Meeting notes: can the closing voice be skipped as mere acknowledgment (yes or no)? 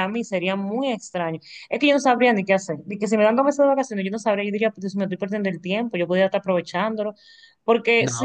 no